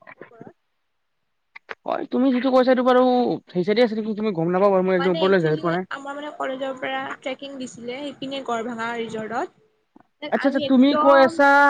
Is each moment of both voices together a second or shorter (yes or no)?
no